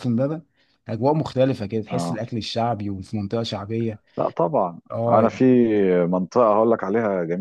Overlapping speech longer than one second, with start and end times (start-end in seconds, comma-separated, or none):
none